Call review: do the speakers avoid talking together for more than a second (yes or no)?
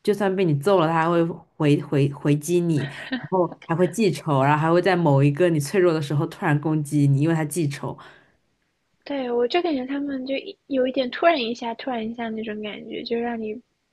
yes